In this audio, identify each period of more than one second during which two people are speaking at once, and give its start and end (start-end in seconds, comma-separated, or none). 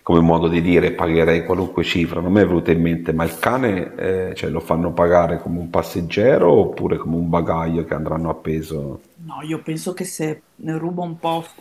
none